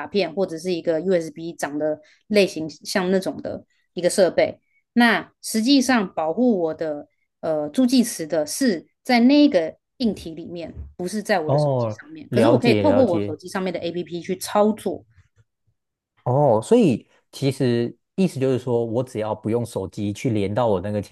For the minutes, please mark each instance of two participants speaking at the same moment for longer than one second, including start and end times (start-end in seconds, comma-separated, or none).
11.4-13.3